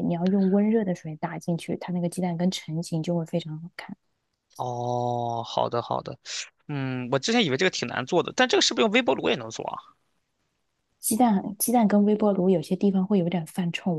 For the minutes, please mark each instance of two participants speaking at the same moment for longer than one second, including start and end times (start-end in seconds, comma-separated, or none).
none